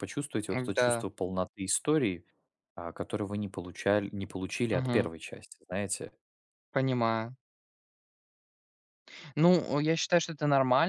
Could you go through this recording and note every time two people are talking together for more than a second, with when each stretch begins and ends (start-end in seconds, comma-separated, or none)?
none